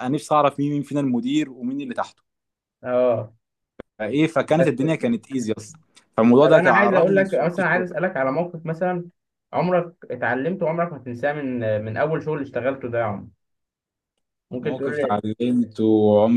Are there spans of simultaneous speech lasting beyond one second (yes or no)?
yes